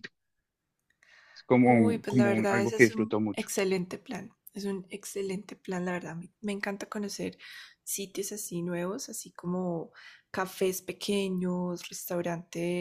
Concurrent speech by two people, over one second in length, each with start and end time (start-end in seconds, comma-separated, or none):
1.6-3.5